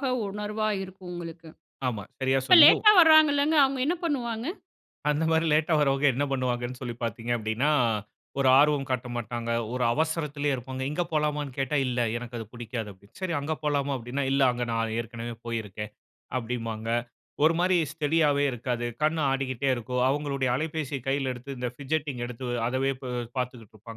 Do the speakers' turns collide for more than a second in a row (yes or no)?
no